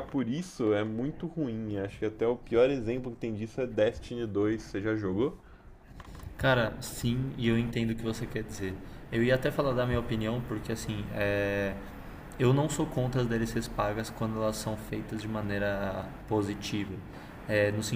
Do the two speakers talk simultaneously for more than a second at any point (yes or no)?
no